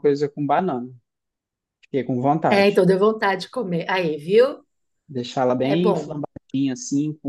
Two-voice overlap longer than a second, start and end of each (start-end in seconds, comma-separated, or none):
none